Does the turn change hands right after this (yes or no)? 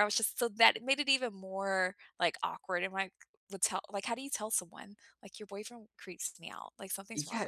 yes